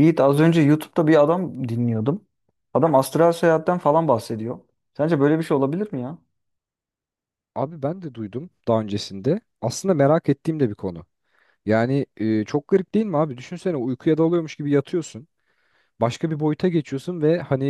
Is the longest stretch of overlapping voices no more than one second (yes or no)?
yes